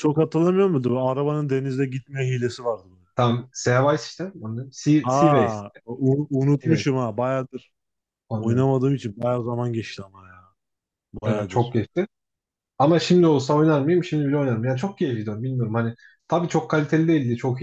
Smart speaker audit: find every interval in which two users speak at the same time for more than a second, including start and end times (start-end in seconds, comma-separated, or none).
none